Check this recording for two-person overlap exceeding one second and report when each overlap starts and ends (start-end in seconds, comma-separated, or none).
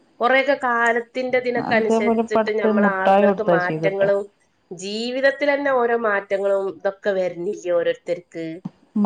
1.7-4.1